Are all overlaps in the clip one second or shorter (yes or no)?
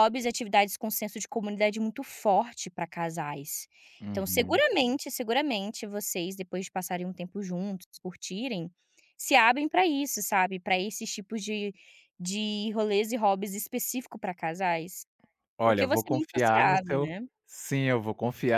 no